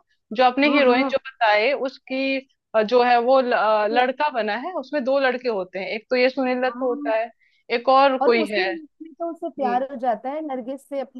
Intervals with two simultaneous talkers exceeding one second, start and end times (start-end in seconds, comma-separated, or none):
none